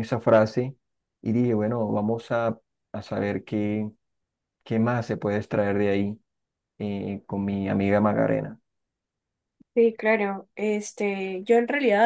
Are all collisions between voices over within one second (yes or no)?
yes